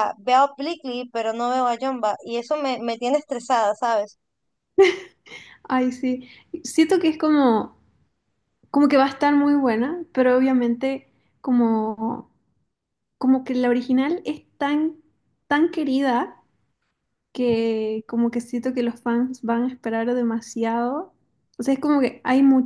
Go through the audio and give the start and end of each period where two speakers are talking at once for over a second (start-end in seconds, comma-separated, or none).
none